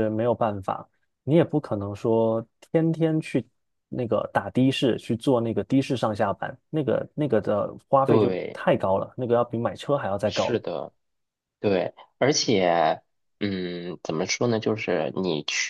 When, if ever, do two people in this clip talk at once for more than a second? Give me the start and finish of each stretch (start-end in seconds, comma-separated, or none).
none